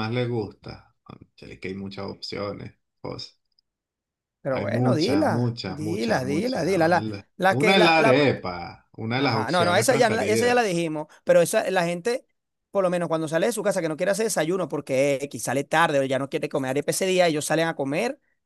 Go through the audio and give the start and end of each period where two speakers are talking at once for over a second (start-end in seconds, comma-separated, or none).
4.5-8.3, 9.2-10.6